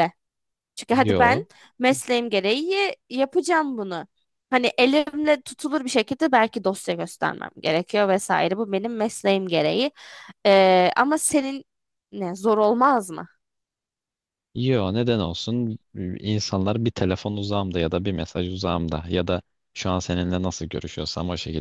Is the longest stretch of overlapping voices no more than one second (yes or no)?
yes